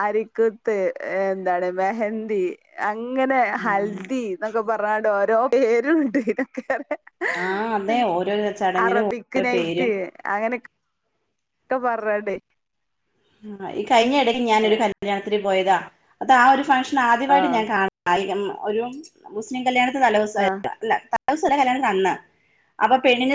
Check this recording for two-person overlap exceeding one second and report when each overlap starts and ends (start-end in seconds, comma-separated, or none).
none